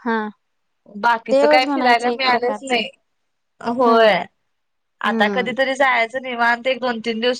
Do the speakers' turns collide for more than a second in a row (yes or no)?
yes